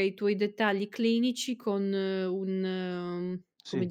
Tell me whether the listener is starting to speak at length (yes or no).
no